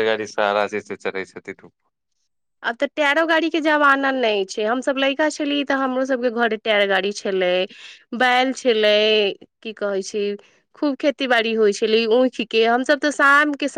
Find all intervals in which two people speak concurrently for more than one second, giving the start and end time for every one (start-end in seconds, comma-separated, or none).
none